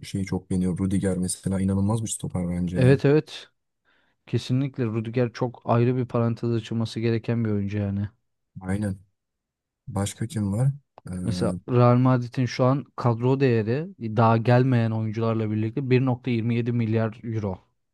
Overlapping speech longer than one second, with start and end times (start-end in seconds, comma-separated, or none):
none